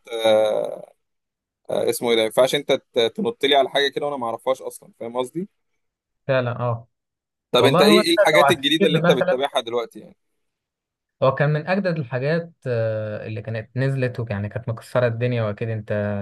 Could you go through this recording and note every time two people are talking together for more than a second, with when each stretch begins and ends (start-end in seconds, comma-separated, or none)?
7.6-9.4